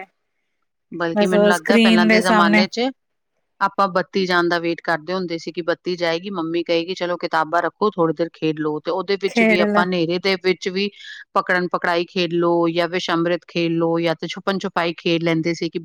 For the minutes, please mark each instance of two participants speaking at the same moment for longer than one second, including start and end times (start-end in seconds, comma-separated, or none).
1.2-2.6